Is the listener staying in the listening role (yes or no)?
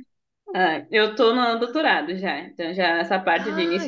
yes